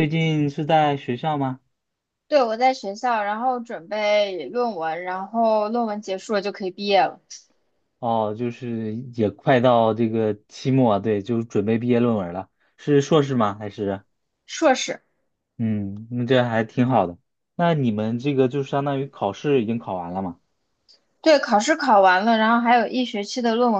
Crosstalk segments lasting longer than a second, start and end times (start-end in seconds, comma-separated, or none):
none